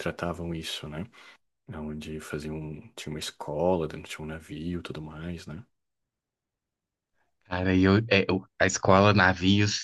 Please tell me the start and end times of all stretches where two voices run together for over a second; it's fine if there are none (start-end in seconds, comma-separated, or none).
none